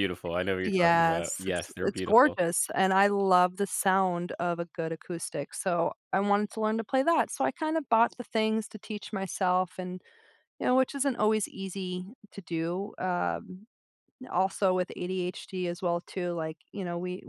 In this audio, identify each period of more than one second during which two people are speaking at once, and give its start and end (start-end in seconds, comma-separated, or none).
0.7-2.4